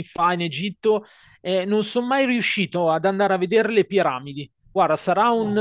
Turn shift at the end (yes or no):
no